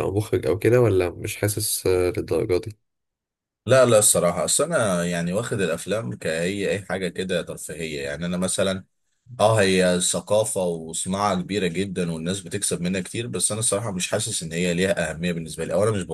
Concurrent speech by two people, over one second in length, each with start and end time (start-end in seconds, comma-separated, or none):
none